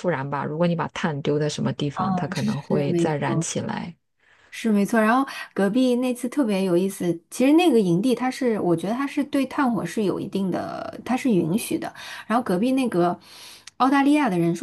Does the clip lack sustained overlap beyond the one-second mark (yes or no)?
no